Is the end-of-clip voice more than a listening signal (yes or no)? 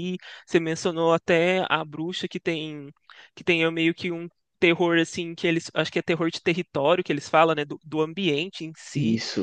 no